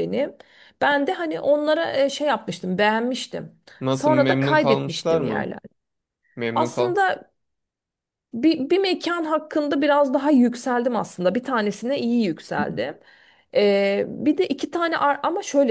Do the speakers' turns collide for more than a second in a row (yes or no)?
yes